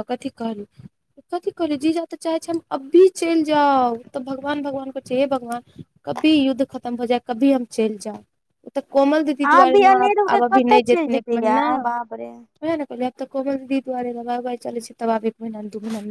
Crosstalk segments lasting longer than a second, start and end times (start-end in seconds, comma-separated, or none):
9.5-11.7